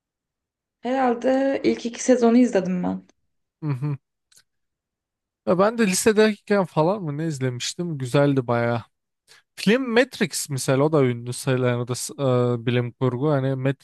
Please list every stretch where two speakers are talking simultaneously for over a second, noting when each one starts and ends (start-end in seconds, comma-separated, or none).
none